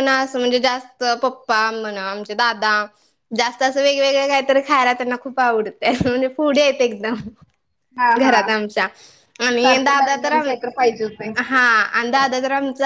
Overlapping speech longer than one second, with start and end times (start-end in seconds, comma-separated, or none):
9.5-11.3